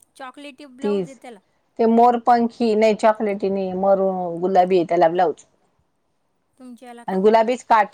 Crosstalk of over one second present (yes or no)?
no